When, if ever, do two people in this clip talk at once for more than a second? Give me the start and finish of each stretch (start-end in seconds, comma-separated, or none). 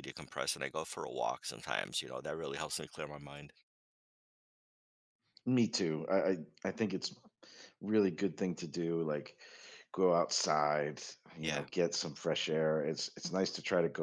none